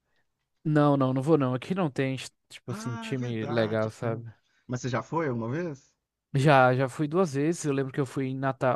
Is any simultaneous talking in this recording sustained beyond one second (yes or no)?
yes